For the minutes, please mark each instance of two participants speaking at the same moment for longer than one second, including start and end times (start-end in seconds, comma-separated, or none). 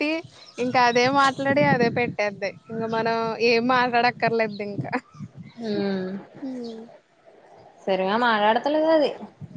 none